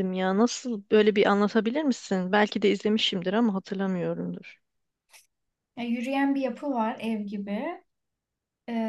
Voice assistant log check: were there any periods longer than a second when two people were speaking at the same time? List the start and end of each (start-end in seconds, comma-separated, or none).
none